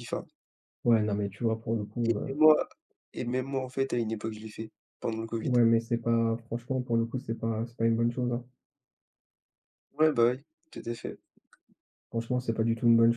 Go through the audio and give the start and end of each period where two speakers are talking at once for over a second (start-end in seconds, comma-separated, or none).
none